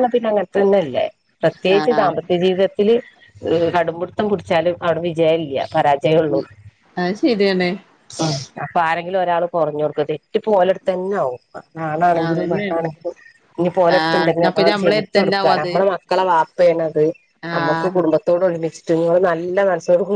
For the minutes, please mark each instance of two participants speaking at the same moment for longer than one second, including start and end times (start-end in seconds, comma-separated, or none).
14.0-15.7